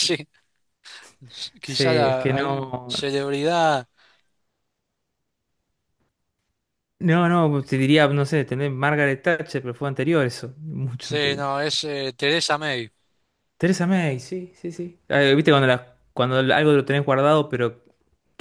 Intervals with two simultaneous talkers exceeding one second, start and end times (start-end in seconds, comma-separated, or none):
1.6-2.9